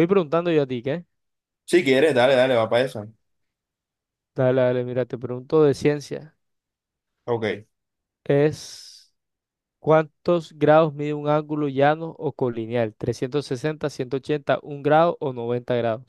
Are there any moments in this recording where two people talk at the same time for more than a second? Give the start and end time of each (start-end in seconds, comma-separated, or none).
none